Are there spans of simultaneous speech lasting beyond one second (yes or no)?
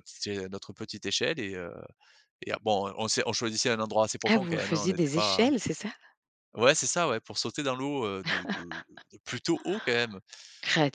yes